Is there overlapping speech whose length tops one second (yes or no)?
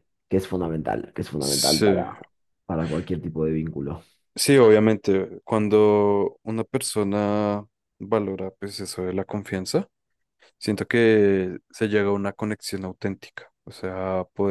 no